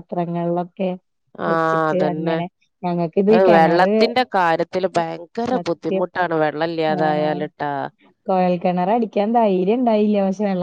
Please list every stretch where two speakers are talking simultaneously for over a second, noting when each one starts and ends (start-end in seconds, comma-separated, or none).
none